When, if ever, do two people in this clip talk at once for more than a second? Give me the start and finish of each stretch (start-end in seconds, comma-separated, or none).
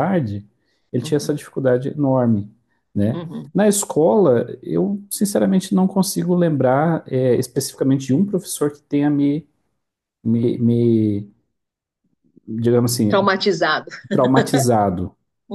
none